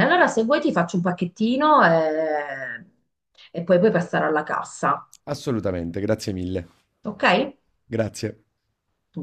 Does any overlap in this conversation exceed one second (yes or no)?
no